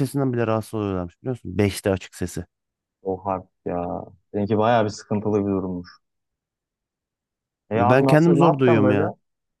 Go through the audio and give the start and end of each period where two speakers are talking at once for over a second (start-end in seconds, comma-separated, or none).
7.7-9.0